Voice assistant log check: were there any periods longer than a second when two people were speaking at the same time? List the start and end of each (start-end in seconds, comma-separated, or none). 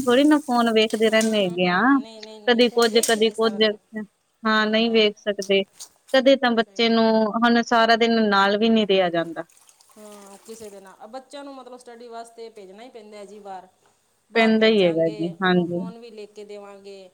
14.3-15.8